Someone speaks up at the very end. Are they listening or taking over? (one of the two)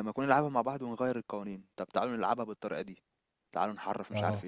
taking over